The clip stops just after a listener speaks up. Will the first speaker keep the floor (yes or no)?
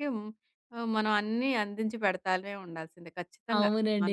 no